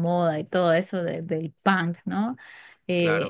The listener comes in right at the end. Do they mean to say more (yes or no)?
no